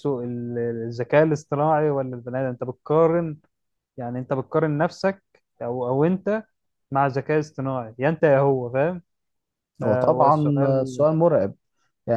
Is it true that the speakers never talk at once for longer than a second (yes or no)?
no